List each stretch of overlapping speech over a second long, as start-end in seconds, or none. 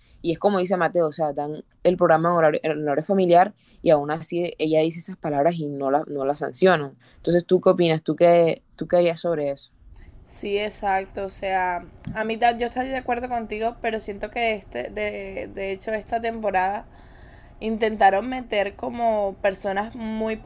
none